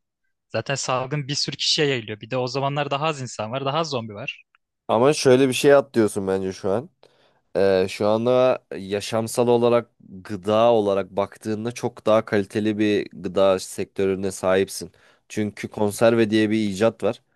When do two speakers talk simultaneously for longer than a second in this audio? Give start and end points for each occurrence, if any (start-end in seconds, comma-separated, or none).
none